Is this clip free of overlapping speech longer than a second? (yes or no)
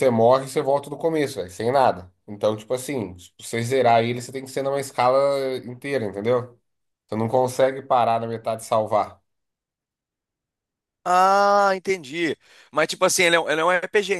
yes